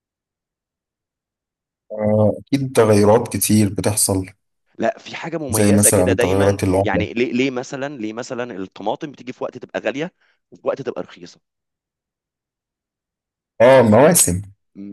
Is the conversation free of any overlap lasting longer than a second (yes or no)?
no